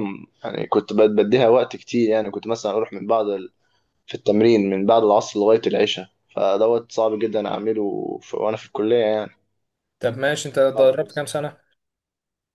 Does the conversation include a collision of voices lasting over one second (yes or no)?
no